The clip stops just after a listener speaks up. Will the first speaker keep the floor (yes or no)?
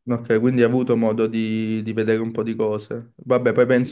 yes